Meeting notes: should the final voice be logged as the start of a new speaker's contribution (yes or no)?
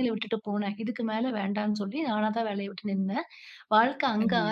no